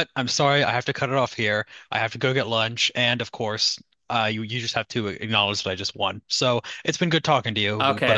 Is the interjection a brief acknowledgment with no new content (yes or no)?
no